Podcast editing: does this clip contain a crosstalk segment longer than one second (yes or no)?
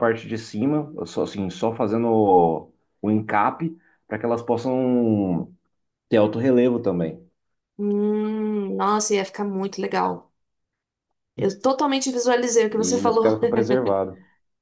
no